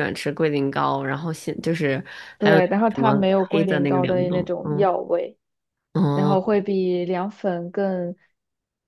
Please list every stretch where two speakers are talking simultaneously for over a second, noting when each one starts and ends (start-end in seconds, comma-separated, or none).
2.4-4.9